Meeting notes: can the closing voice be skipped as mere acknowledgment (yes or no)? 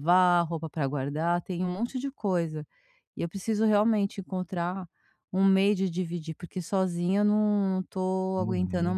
no